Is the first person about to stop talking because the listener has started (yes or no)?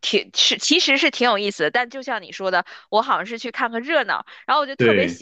no